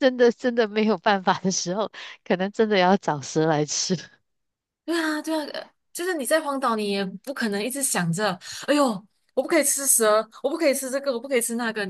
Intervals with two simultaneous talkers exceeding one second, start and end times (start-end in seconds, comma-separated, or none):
none